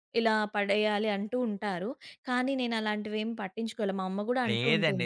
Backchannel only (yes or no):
no